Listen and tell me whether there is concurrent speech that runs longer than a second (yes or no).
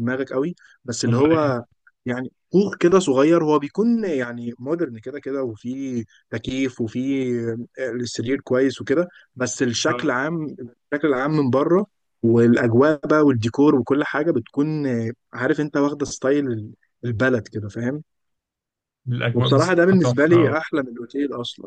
yes